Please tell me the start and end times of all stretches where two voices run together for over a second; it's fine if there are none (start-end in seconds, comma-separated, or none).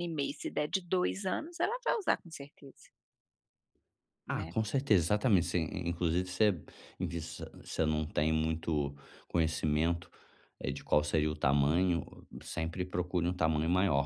none